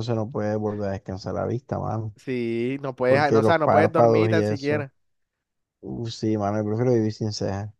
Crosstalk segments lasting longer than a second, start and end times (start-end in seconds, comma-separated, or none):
3.1-4.9